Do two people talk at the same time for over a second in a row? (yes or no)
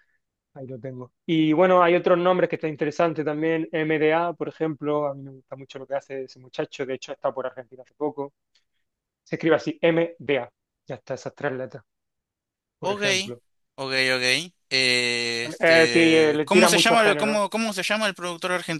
yes